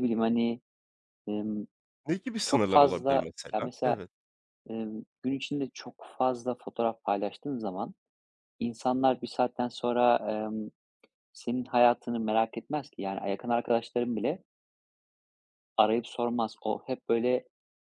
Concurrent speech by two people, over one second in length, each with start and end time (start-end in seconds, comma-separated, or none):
2.5-4.0